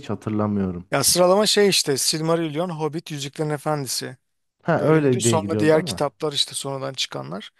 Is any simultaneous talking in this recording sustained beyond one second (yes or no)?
yes